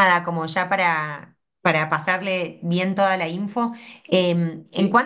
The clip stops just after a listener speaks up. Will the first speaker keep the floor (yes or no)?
yes